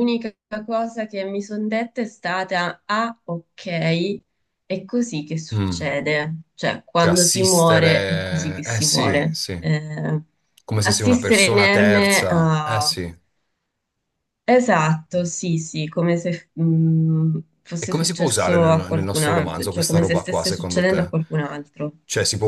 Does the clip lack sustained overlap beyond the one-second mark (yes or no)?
no